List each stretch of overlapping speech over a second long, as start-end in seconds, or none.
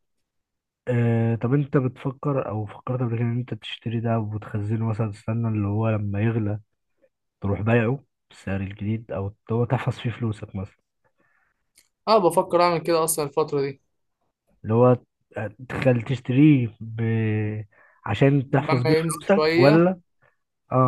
18.5-19.9